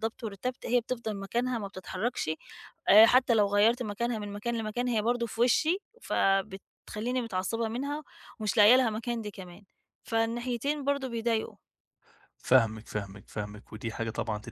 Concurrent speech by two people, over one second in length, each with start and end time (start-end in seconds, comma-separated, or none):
none